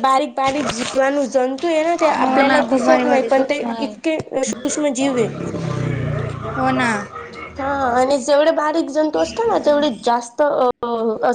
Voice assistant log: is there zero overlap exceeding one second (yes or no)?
no